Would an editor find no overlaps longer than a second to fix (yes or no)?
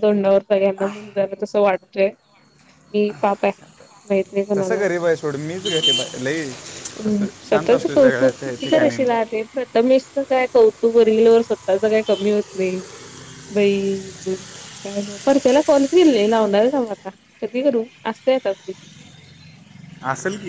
no